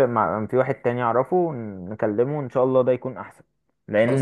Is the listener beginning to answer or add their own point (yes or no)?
no